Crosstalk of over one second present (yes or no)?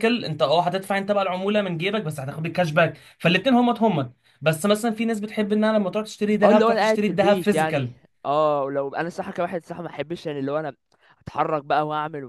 yes